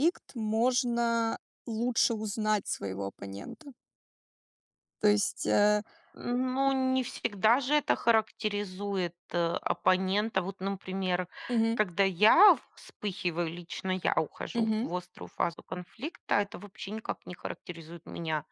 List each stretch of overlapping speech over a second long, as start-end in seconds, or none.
none